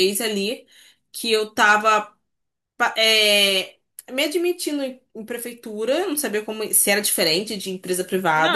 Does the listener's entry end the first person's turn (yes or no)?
yes